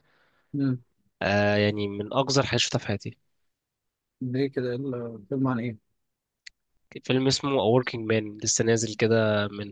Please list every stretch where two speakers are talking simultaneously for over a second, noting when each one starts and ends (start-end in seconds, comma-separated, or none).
none